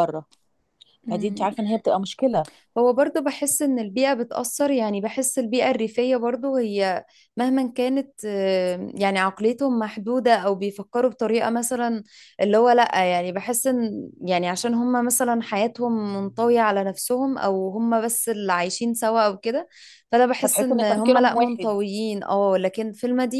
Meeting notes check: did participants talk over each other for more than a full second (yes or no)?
yes